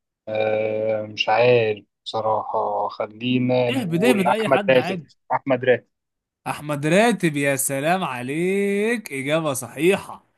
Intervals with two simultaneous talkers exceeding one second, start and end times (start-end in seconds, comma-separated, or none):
3.7-5.1